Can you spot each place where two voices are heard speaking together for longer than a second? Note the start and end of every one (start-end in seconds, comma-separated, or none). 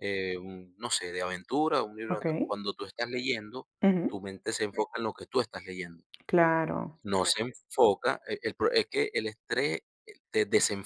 none